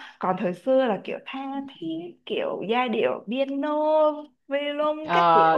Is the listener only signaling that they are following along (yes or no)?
no